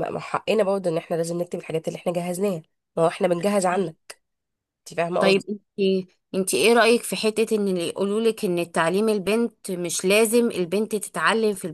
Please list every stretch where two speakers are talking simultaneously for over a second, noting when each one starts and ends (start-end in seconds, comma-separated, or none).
none